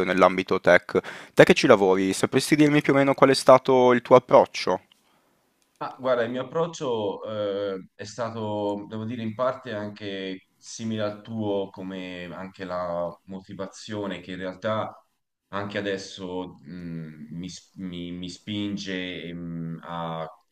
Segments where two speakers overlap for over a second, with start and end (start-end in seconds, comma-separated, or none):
none